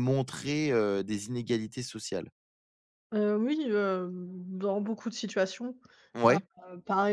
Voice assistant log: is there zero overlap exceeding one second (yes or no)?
yes